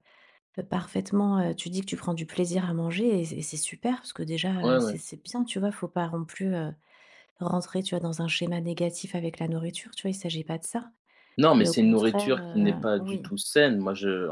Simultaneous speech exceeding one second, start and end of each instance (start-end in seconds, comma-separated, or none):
11.6-13.3